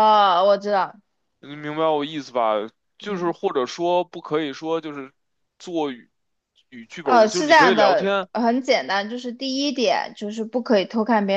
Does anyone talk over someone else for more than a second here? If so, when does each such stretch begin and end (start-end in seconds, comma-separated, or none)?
7.0-8.3